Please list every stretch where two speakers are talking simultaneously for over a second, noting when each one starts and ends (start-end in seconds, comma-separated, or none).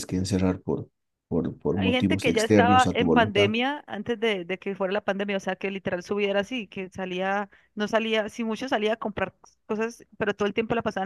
1.8-3.5